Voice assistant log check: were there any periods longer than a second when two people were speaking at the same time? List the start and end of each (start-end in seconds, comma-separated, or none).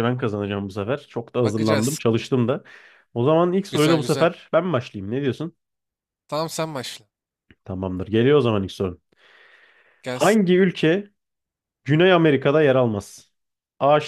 none